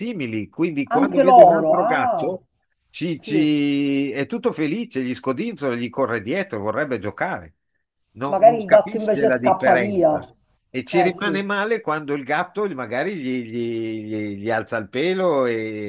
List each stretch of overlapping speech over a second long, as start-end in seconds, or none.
0.9-2.4, 8.3-10.2